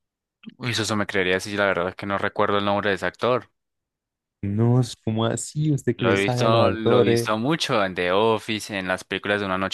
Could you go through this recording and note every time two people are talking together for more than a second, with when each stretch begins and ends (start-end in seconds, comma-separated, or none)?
6.0-7.3